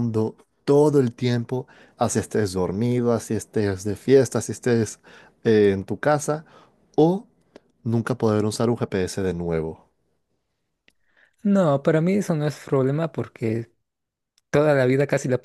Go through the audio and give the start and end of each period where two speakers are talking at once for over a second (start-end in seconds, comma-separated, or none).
none